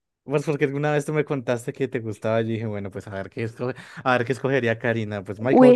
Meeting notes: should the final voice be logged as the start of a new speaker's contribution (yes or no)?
yes